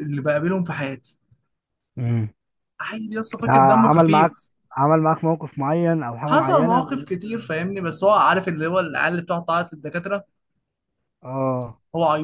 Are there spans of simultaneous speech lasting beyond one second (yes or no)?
yes